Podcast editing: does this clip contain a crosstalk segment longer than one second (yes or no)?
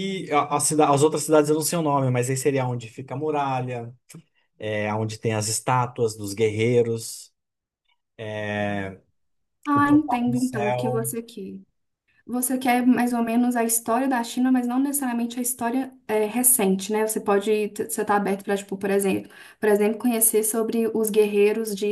yes